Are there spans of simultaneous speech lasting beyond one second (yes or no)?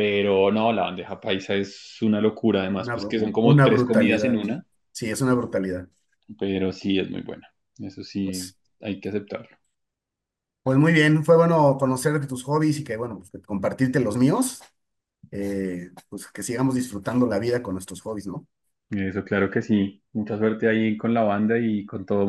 yes